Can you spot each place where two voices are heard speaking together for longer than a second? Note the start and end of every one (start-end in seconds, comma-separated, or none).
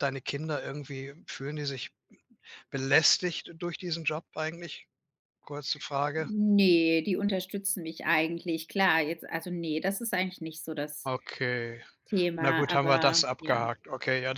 12.4-13.7